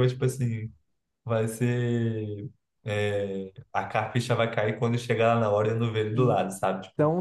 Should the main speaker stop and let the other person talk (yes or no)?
yes